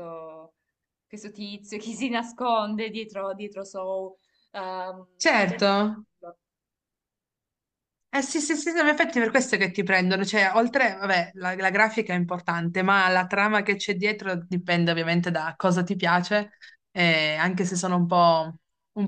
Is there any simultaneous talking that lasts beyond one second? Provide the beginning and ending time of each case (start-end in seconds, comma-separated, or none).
none